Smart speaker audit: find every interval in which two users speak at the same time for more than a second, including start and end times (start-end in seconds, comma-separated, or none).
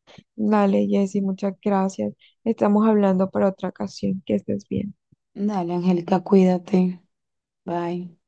none